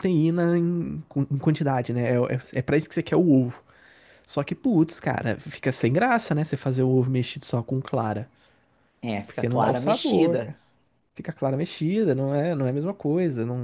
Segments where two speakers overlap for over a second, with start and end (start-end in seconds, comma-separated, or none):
9.2-10.6